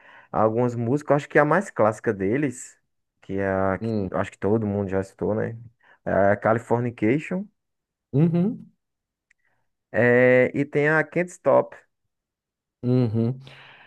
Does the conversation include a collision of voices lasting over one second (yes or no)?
no